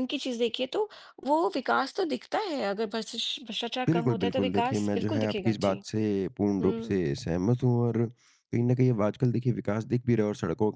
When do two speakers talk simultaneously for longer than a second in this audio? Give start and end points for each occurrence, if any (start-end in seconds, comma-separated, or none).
3.9-5.8